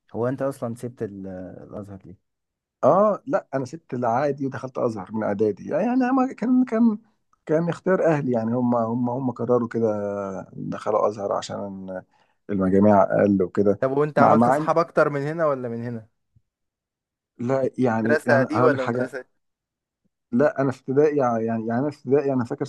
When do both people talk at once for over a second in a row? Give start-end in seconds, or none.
18.0-19.3